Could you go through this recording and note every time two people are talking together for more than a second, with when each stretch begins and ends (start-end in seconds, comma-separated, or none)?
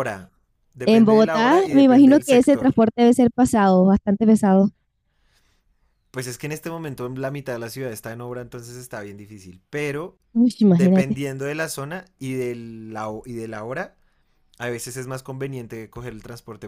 0.8-2.8